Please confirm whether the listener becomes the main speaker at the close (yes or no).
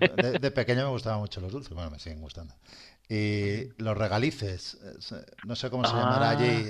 no